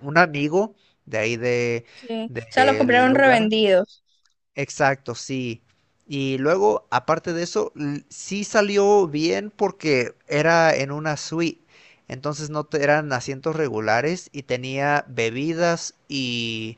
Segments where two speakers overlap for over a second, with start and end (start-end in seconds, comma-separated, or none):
2.3-3.5